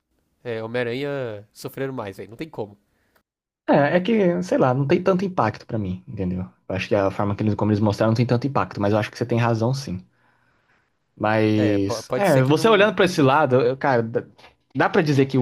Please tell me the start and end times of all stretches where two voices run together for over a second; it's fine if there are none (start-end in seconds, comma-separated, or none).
11.5-13.0